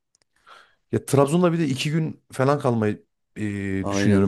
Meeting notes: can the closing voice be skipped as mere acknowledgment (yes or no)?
yes